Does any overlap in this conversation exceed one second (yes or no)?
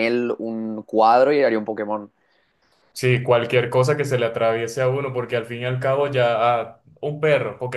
no